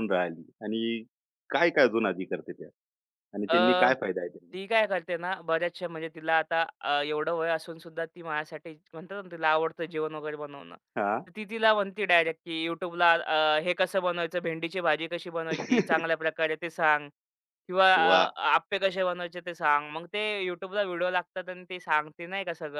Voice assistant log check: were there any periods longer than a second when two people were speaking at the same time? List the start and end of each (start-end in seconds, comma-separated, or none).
none